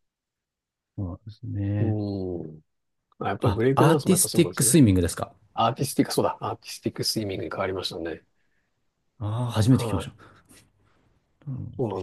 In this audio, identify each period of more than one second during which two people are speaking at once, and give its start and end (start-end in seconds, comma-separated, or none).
3.4-4.8